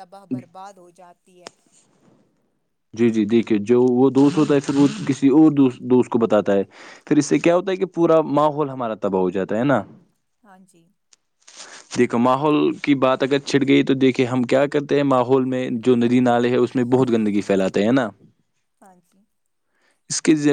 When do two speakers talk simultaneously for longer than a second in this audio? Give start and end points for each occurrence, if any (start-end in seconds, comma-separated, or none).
none